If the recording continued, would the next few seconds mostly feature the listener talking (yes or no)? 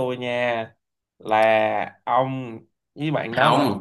yes